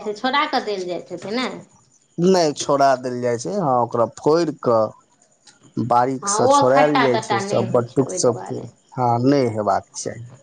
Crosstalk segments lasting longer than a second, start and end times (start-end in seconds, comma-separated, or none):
6.2-8.6